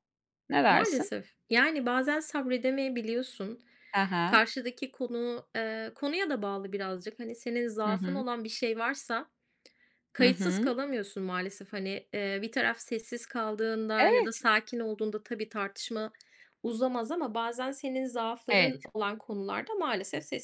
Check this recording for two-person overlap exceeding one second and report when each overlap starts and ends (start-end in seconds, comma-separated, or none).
none